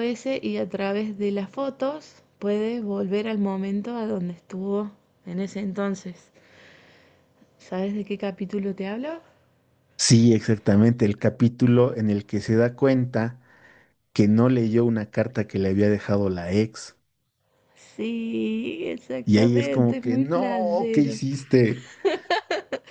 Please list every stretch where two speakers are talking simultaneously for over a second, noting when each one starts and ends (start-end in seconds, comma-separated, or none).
19.2-21.2